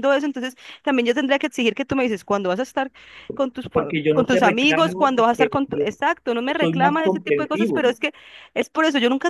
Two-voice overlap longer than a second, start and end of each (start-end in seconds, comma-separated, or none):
3.7-5.8, 6.5-7.8